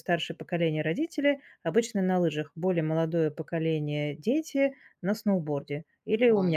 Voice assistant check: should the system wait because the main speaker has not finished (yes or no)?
no